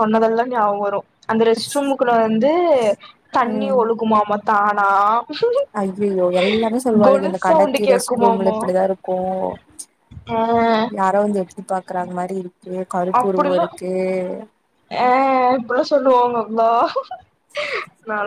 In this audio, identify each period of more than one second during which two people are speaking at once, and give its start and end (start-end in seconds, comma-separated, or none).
7.1-8.6